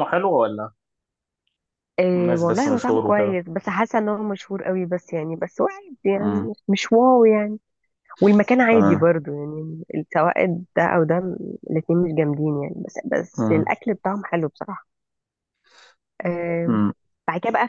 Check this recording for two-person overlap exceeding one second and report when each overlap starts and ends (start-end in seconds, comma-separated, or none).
2.2-3.4